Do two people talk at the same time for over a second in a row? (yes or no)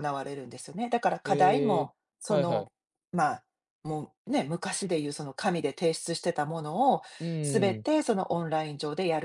yes